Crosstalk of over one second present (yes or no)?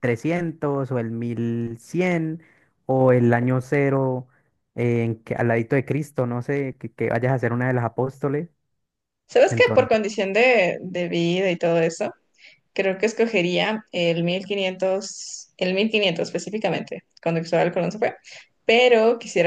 no